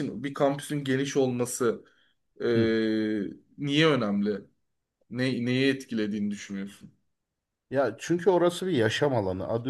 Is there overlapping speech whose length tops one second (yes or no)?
no